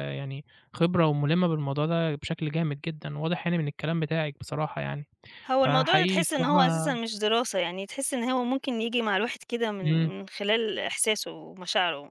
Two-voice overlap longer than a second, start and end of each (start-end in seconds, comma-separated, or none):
5.7-7.0